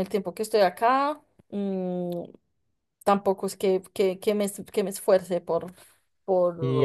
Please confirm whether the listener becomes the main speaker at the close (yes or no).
yes